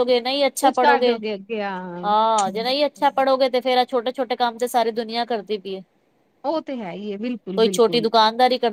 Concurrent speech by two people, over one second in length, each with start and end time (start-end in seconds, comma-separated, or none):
none